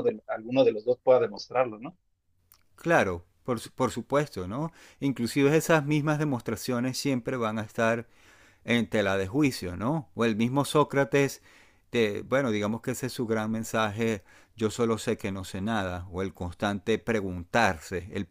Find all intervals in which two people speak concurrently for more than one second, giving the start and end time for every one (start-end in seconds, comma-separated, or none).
none